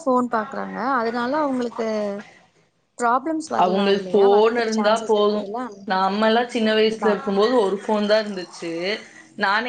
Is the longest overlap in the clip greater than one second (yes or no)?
yes